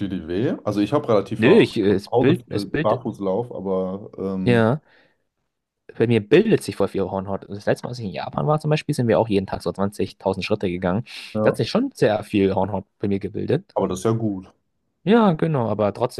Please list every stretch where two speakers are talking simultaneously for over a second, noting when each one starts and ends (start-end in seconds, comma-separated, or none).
1.4-3.0